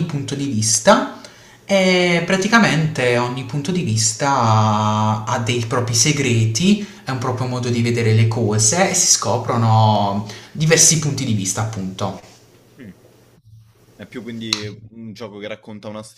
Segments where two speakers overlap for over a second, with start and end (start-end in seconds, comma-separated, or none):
none